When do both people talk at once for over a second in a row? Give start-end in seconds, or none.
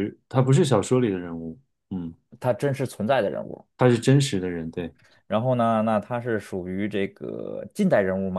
none